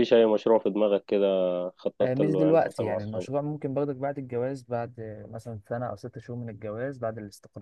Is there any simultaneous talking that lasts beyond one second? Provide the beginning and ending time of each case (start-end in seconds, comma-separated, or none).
2.0-3.3